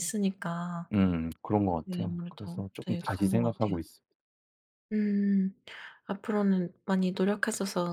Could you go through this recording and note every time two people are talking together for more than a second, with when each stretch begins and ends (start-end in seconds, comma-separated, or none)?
1.8-3.8